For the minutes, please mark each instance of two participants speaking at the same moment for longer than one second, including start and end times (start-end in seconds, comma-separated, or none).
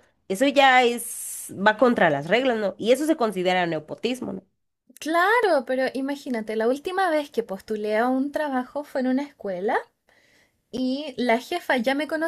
none